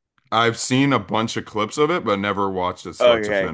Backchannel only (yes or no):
no